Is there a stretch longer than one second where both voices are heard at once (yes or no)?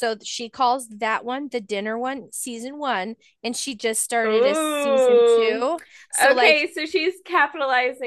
yes